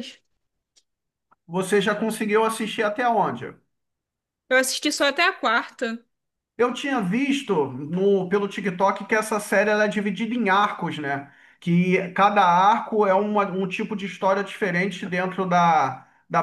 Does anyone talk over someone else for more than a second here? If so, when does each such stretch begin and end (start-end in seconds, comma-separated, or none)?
none